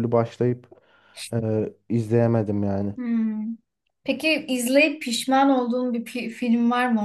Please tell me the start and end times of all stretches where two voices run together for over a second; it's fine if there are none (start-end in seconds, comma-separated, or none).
none